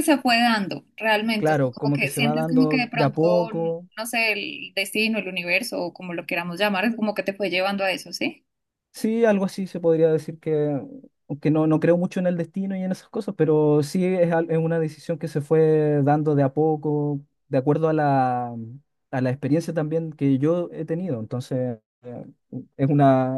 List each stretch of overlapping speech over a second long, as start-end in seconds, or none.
1.4-3.2